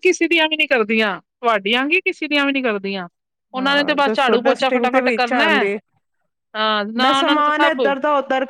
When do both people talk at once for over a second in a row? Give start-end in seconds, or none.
3.6-5.7